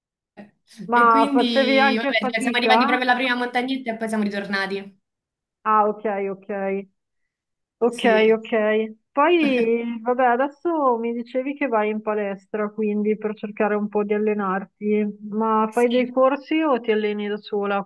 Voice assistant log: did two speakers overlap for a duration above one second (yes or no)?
yes